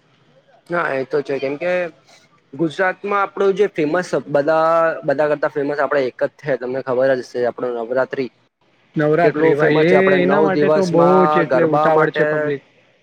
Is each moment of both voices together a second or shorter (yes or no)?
no